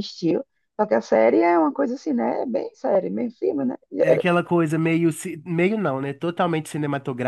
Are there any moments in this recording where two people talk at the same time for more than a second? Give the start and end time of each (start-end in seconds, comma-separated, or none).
none